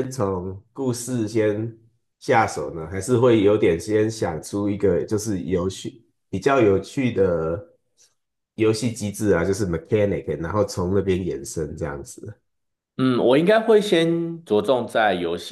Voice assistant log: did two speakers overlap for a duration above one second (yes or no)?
no